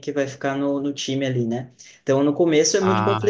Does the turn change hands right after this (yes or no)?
no